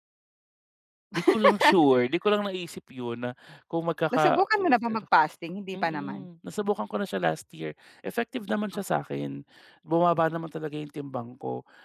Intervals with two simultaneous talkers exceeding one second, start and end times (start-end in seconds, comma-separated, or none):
none